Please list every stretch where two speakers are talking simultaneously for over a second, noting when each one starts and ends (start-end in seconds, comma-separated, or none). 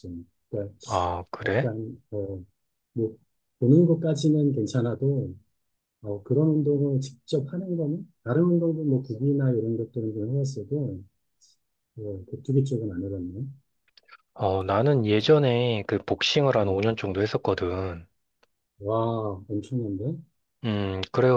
none